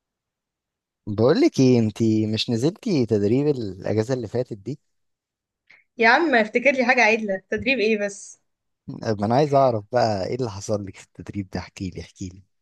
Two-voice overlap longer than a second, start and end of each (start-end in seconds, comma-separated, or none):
none